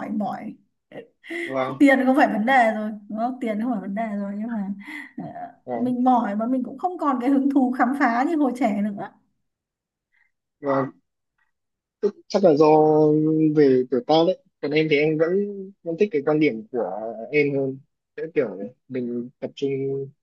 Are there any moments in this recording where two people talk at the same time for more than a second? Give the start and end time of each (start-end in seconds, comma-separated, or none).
none